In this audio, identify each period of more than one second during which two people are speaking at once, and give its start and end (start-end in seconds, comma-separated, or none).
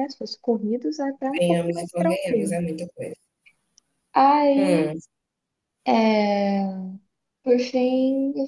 1.4-2.5